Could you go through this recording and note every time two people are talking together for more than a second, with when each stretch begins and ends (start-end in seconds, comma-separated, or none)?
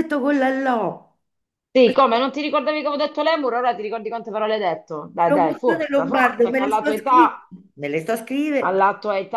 5.3-7.3